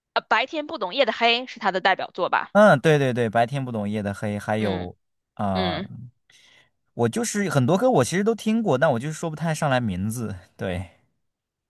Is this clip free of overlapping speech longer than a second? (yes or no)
yes